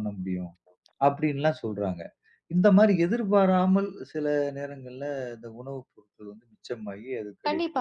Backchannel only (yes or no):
no